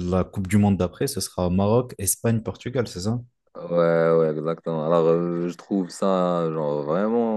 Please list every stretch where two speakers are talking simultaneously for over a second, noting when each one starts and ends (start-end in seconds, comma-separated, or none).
none